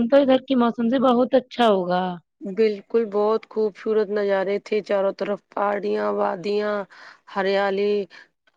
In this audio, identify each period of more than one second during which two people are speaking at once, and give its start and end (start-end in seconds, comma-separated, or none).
none